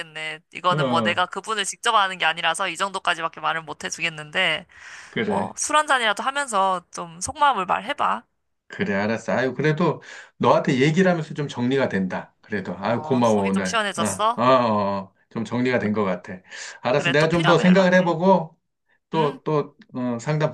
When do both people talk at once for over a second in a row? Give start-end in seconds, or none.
12.9-14.4, 16.9-18.1